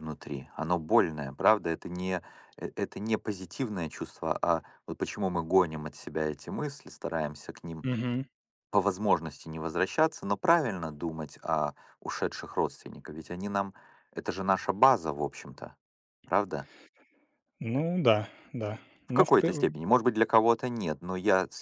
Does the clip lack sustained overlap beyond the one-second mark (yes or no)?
yes